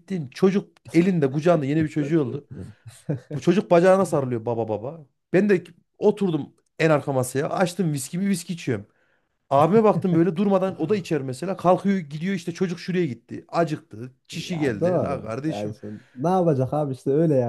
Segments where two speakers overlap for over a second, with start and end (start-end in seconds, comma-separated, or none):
14.3-15.8